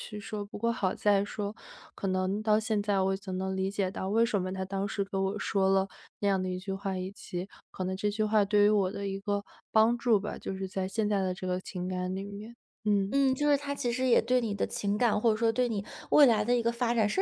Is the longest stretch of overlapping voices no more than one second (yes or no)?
yes